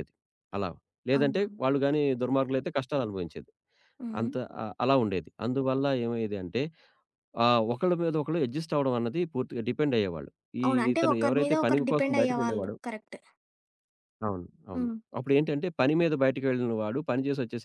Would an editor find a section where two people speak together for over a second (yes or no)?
yes